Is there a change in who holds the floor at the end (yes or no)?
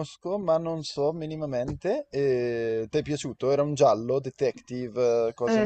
yes